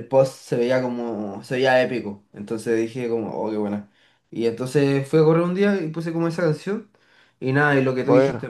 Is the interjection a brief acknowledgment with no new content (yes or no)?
yes